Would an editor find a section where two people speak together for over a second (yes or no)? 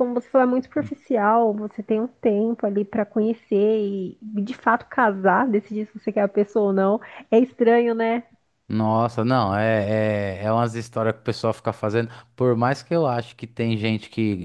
no